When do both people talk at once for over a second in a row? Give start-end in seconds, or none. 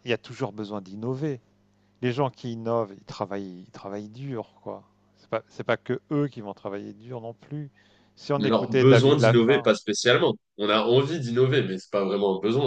8.4-9.9